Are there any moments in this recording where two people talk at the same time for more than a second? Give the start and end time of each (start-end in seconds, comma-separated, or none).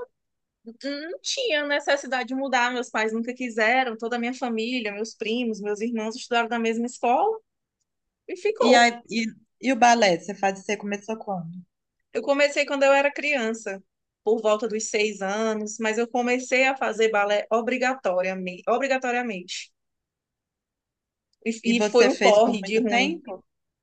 21.7-23.2